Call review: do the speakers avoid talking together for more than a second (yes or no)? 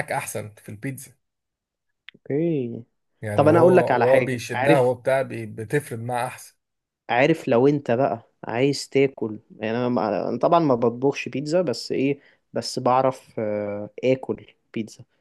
no